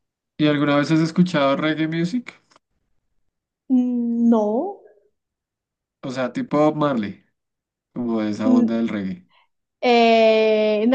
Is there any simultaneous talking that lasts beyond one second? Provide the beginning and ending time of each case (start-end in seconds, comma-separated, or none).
none